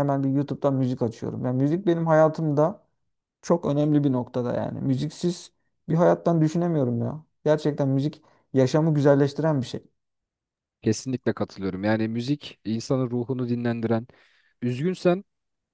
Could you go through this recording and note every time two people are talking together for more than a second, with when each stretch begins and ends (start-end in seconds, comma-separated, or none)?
none